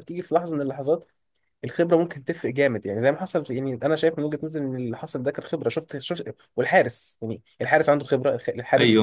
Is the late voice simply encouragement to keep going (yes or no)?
no